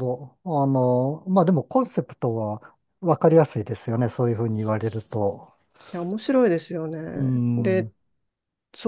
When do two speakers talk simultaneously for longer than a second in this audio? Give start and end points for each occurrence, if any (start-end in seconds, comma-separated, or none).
none